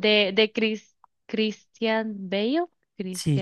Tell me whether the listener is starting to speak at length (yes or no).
yes